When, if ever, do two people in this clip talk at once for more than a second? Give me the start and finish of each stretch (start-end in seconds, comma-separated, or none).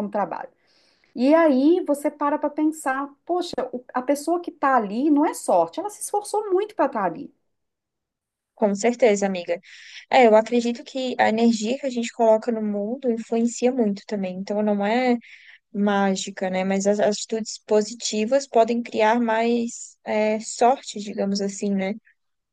none